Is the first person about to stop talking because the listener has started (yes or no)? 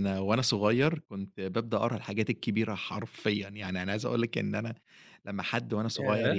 no